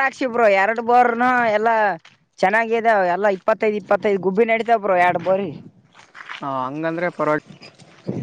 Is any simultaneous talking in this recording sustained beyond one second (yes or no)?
no